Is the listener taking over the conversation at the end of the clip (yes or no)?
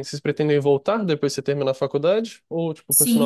yes